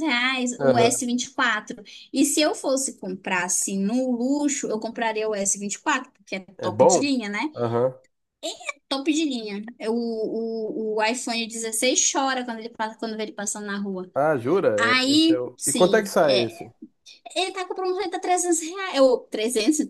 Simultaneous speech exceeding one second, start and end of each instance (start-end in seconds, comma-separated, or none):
14.8-16.6